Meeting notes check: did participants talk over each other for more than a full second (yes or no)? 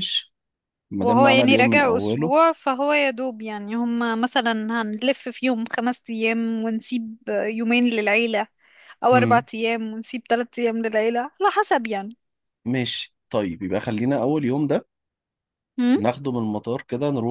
yes